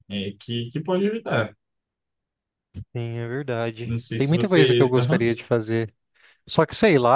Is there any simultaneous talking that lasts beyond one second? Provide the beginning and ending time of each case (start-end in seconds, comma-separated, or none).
3.8-5.3